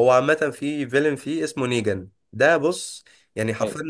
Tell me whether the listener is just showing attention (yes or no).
yes